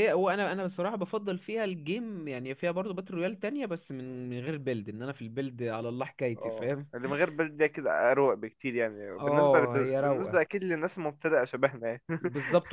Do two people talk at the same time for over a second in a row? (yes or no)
yes